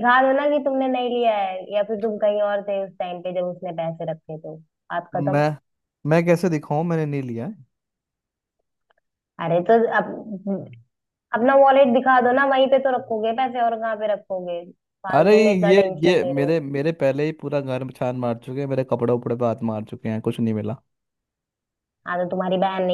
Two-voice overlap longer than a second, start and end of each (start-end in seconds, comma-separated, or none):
15.2-16.6